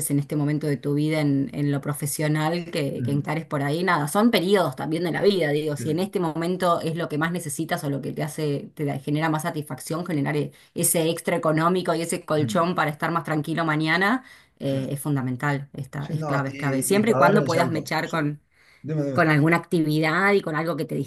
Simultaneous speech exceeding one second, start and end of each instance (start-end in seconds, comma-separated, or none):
16.0-18.3